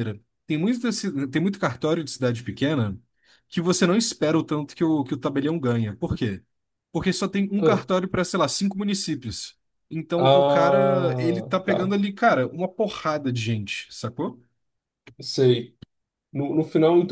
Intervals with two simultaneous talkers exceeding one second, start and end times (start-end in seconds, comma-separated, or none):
10.2-11.8